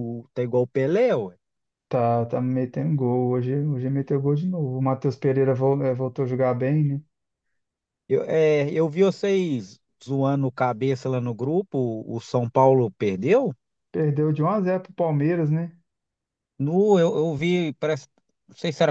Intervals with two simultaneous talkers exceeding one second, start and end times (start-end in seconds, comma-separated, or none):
none